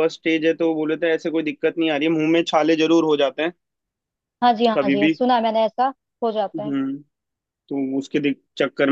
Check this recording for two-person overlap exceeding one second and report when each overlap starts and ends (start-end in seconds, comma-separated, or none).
none